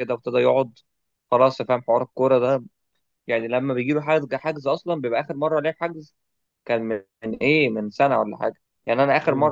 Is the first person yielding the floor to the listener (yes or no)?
no